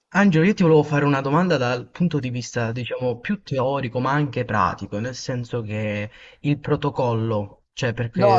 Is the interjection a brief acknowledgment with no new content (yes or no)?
no